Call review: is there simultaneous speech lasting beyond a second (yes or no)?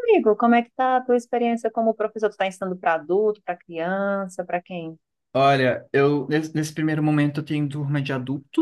no